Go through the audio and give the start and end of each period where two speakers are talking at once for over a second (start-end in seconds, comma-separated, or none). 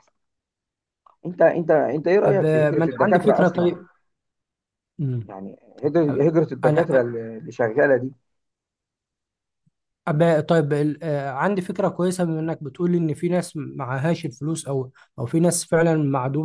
2.2-3.7